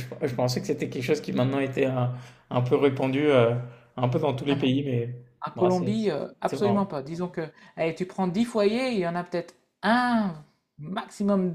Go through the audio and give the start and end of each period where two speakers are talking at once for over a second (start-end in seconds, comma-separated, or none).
5.5-6.9